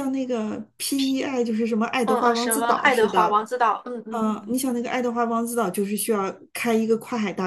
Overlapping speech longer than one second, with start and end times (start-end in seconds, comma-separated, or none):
2.0-3.4